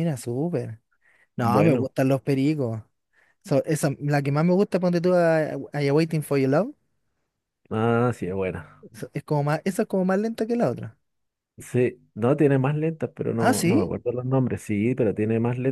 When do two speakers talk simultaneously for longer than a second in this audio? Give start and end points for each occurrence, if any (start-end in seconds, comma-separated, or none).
none